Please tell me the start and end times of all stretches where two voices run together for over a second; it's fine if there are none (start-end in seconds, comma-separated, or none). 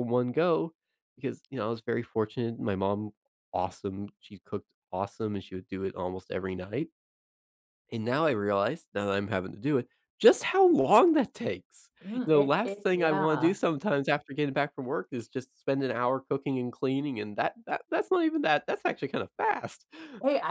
12.0-13.6